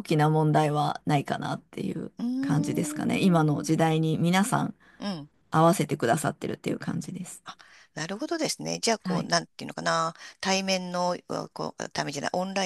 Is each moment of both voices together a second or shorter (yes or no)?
no